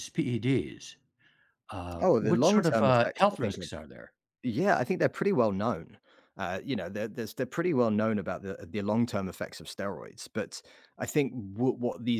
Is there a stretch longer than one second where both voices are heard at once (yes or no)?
yes